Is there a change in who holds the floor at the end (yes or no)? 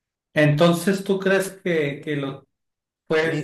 no